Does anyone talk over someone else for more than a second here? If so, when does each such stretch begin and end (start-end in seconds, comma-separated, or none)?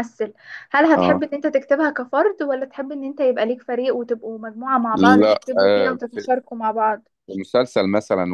none